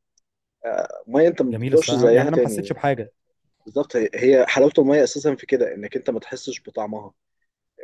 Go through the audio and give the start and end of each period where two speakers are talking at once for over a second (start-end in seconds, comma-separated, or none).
1.5-2.8